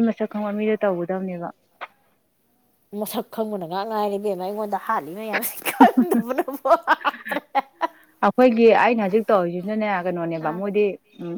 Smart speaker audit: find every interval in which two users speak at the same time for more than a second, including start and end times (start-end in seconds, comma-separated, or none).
none